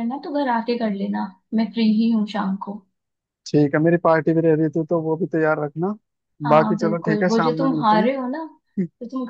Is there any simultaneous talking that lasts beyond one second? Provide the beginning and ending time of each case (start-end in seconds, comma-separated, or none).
6.5-8.1